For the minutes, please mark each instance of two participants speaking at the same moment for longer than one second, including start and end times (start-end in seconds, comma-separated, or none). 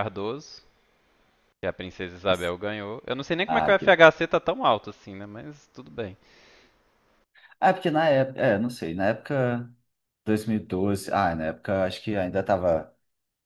none